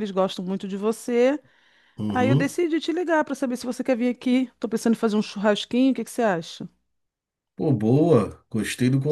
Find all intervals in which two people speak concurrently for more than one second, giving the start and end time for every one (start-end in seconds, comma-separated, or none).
none